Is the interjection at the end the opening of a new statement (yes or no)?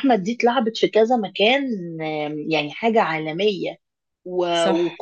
no